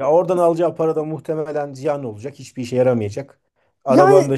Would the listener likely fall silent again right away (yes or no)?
yes